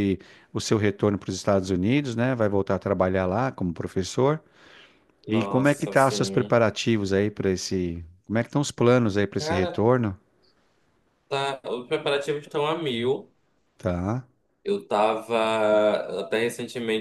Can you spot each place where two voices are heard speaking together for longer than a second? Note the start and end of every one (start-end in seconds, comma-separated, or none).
5.3-6.6